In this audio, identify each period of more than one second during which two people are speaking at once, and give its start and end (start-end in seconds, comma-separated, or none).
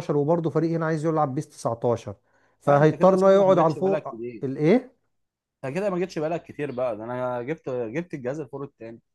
2.7-4.4